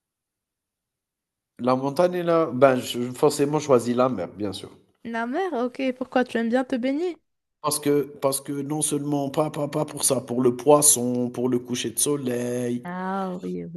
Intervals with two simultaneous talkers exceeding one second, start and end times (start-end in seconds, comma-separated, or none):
none